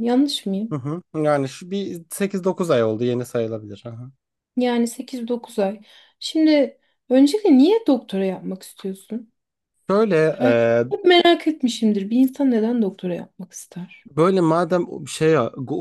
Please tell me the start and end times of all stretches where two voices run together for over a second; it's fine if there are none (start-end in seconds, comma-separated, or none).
none